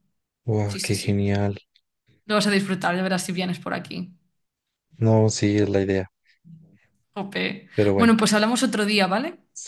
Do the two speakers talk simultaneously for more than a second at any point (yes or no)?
no